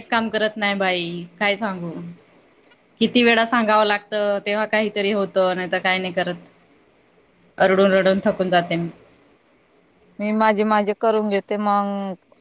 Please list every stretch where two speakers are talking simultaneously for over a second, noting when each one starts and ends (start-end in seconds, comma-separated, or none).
none